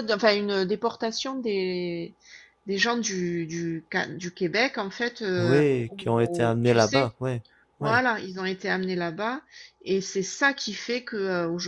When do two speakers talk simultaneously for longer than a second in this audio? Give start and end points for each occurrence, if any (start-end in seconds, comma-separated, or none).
5.4-7.1